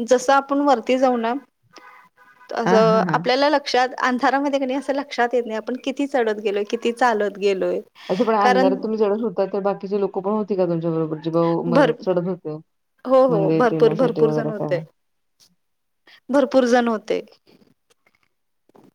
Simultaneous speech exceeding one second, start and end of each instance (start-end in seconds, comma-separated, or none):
13.3-14.8